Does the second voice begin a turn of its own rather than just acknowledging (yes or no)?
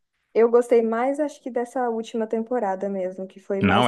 yes